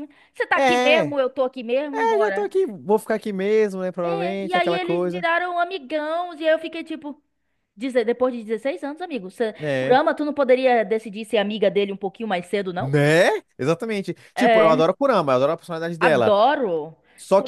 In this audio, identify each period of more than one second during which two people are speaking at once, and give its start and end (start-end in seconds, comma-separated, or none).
4.0-5.2